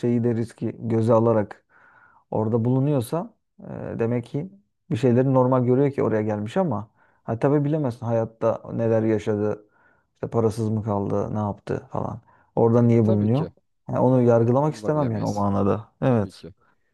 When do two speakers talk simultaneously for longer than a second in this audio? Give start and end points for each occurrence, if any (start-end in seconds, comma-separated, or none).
14.1-15.5